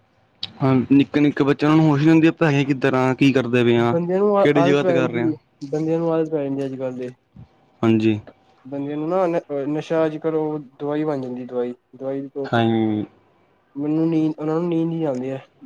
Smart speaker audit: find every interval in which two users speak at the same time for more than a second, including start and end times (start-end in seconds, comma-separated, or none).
none